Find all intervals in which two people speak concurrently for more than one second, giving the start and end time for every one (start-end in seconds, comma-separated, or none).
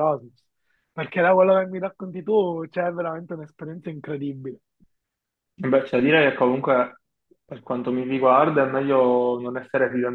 none